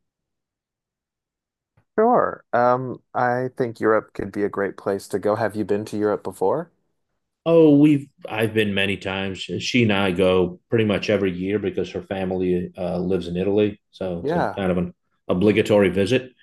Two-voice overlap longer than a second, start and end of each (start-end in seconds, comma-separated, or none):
none